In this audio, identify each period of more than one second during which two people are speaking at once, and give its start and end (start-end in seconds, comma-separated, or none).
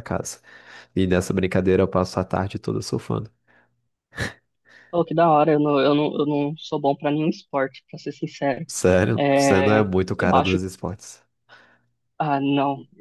9.2-10.6